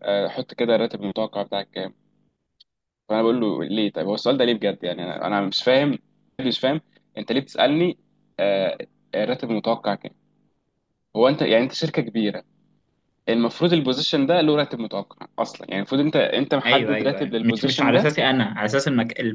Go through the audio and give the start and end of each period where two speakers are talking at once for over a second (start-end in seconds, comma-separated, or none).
16.7-18.1